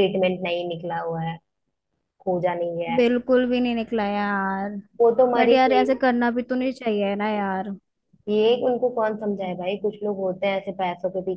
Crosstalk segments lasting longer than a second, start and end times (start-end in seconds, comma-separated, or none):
none